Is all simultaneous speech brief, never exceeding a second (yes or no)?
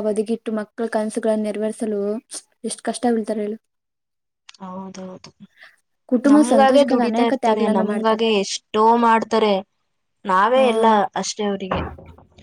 no